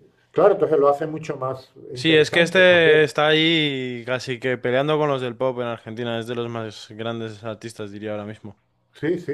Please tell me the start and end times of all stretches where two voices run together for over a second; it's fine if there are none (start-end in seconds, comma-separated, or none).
1.9-3.1